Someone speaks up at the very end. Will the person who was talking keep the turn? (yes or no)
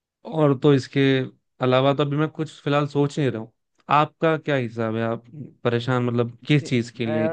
yes